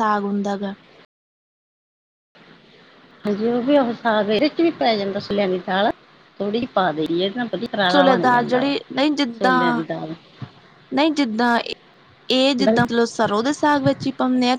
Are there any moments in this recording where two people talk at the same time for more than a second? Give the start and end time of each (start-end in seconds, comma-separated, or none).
none